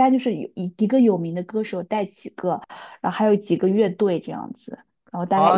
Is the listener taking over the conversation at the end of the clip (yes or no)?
yes